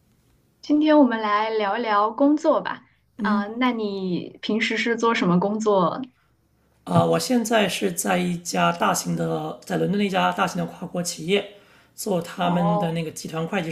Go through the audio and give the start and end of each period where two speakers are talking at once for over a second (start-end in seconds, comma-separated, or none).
none